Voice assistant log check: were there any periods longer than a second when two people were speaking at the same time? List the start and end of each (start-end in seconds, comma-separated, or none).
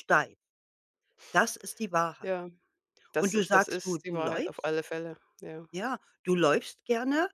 3.2-4.7